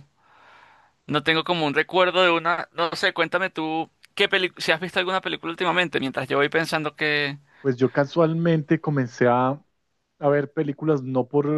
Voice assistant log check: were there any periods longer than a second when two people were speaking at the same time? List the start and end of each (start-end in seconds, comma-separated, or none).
none